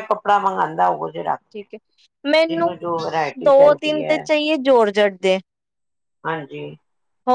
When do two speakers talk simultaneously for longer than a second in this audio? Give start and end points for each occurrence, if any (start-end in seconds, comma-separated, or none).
2.5-4.2